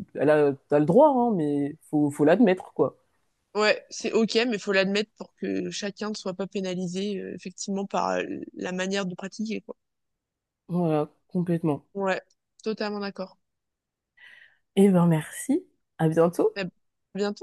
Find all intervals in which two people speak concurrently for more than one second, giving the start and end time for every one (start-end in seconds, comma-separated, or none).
none